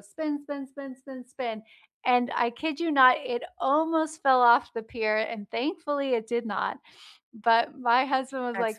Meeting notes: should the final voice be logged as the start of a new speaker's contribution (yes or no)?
no